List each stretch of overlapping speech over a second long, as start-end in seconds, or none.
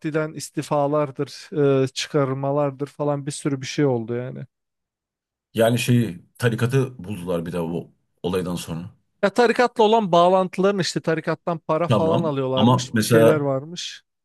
11.9-13.5